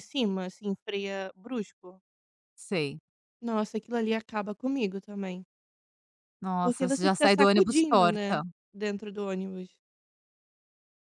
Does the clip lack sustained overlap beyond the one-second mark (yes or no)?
no